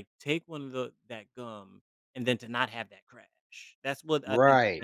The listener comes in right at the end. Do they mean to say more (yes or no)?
yes